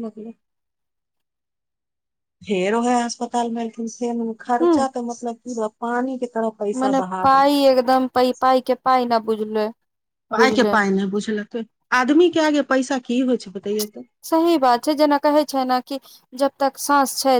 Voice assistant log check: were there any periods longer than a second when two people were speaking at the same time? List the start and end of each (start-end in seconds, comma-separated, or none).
none